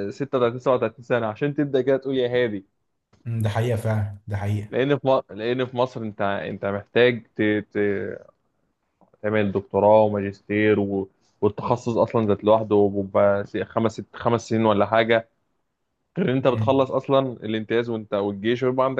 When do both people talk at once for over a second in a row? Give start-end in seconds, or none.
none